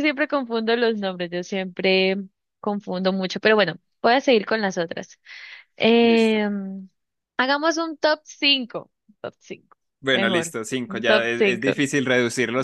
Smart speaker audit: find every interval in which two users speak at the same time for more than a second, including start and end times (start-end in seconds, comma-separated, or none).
10.1-11.7